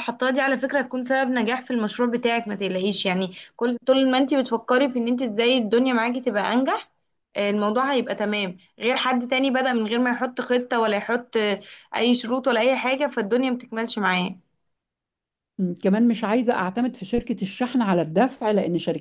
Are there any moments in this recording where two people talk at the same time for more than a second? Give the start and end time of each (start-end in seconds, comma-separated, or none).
none